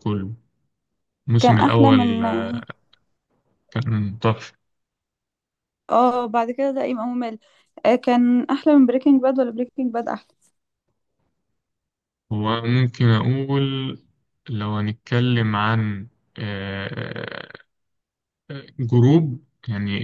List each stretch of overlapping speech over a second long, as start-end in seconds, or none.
1.4-2.6